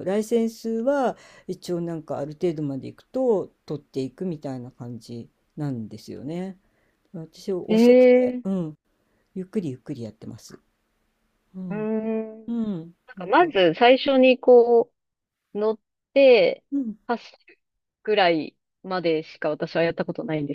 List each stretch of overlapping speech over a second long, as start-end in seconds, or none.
none